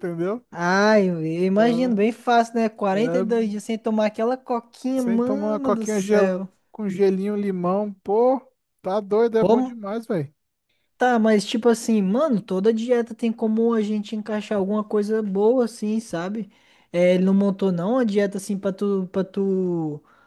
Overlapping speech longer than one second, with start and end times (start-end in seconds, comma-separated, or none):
5.0-6.4